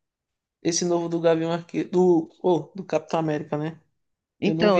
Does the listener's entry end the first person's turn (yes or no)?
yes